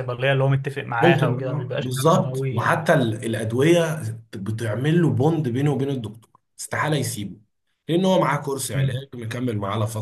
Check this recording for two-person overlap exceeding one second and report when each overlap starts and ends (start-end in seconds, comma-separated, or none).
1.0-2.8